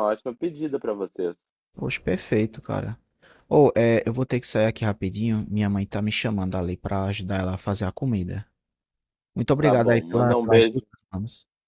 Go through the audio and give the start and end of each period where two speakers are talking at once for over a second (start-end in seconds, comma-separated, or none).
9.6-10.8